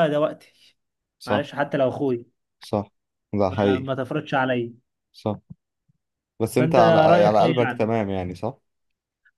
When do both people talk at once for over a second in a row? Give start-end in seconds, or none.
6.6-7.9